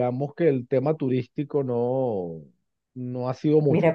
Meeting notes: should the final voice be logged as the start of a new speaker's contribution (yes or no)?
yes